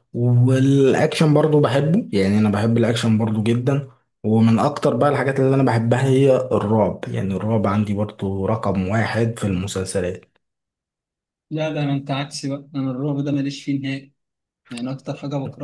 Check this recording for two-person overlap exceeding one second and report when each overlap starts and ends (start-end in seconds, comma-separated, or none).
none